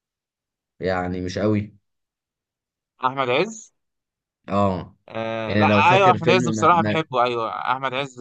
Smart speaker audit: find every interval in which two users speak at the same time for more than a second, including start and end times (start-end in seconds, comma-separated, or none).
5.5-7.0